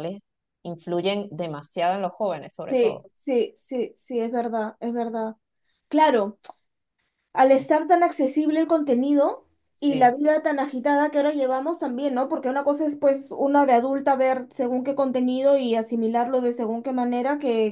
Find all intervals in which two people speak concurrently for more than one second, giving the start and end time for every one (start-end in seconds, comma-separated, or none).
none